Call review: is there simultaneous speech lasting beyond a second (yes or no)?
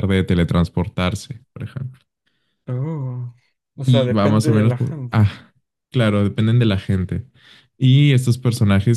yes